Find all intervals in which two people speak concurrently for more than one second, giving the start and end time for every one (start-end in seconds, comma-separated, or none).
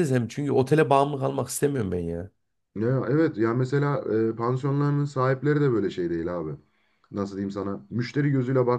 none